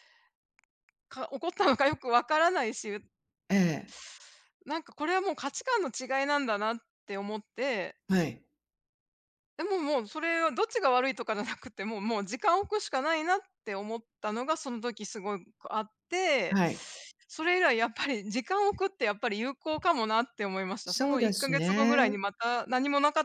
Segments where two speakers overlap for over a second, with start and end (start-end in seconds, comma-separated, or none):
20.9-22.1